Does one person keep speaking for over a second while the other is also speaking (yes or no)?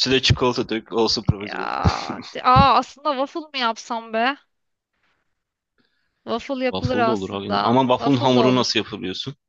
yes